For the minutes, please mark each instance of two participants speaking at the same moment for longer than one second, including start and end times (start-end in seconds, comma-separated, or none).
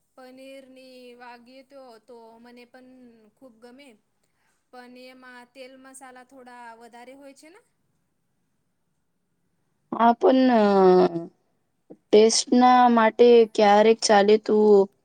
none